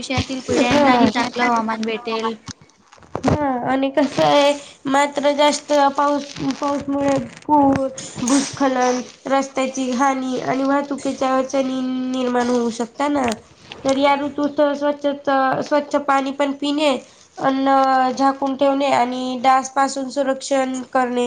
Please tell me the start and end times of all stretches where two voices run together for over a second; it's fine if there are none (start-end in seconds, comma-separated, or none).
none